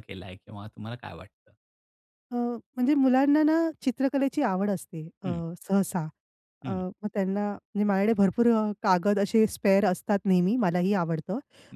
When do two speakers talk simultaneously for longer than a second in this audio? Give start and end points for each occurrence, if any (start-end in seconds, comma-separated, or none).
none